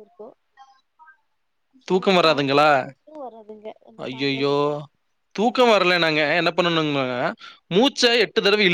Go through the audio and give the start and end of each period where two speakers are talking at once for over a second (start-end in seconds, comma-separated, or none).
none